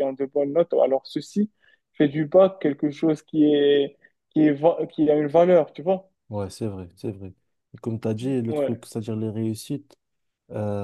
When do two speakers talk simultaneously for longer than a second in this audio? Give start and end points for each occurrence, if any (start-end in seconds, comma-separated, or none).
none